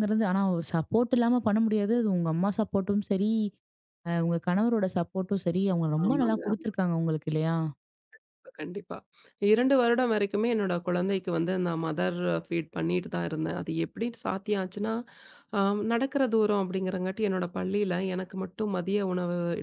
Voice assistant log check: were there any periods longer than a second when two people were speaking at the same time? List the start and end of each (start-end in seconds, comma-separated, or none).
none